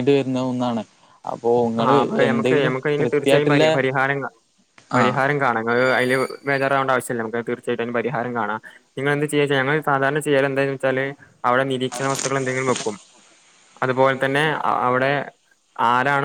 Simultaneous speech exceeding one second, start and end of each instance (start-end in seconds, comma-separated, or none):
1.8-3.6